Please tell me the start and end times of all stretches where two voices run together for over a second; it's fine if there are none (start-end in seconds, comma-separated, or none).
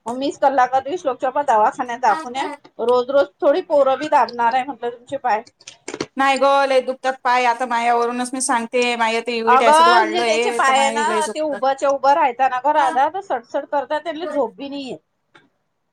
9.5-11.6